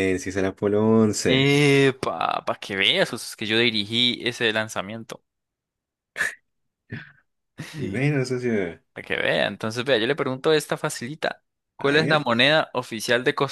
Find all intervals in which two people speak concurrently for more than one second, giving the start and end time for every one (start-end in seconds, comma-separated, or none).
none